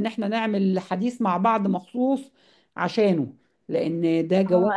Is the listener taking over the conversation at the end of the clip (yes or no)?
yes